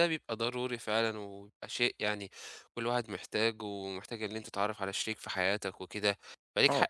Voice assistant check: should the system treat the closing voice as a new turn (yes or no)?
no